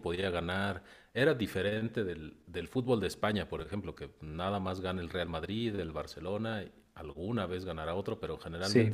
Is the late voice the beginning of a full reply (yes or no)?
no